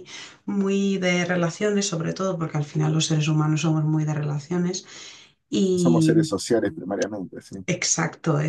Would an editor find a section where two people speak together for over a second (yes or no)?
no